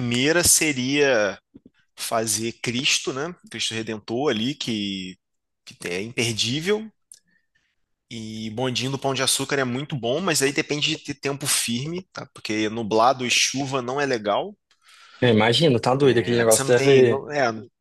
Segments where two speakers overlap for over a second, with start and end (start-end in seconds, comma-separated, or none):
16.0-17.2